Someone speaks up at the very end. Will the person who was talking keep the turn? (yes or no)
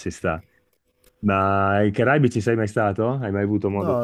no